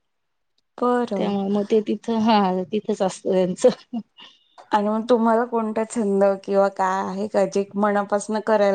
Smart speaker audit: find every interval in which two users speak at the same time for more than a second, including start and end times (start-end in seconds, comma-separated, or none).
none